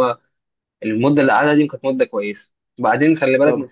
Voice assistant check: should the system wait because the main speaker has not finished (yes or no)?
yes